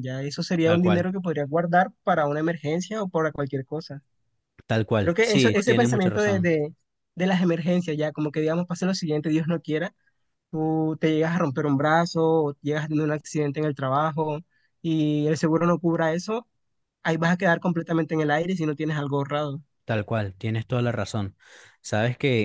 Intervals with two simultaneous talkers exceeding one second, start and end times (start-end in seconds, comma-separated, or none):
5.0-6.5